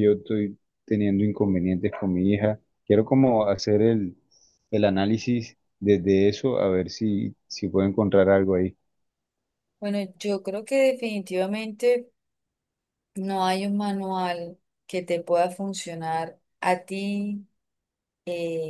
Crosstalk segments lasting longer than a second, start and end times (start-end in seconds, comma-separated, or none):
none